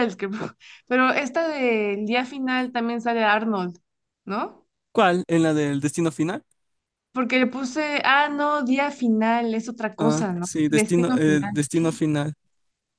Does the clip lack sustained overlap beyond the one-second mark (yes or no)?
no